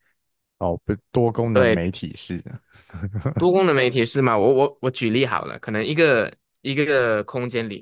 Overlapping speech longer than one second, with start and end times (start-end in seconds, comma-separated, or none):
none